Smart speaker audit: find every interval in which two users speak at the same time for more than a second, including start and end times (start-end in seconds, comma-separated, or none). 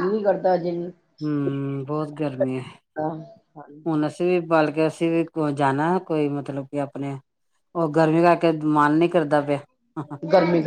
none